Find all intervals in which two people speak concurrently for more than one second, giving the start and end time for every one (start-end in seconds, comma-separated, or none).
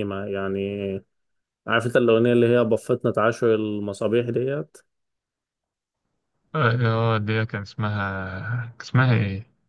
none